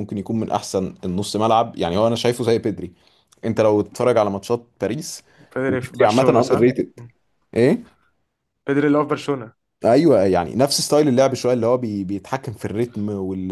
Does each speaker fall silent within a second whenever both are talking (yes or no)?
no